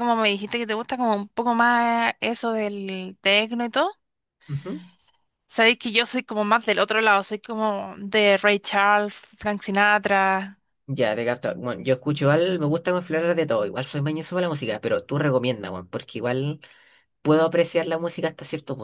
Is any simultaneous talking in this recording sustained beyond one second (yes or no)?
no